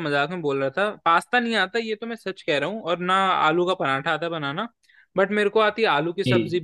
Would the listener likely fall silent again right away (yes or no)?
yes